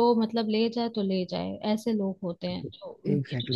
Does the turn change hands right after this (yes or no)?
yes